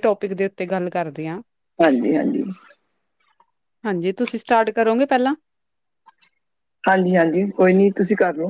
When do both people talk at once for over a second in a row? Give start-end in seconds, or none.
none